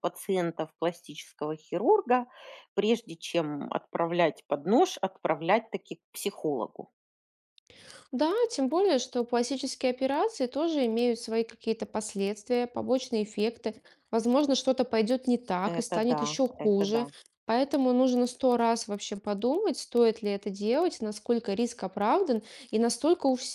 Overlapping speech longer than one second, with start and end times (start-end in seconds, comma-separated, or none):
15.6-17.1